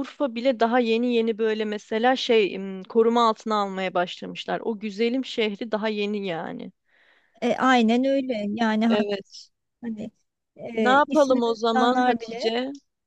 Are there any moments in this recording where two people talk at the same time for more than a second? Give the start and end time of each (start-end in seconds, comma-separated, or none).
10.8-12.5